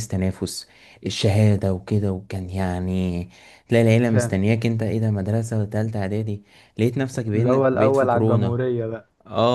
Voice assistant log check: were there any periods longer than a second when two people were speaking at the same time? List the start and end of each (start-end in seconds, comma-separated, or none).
7.3-8.6